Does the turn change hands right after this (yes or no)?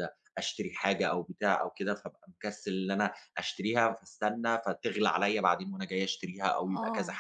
no